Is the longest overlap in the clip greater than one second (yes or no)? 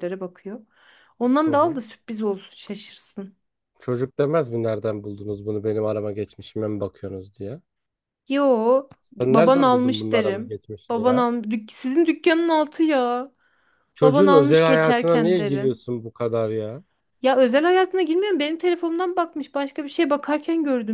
yes